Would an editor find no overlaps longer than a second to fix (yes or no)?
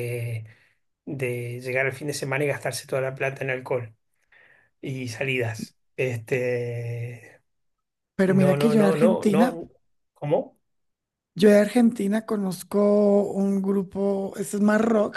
no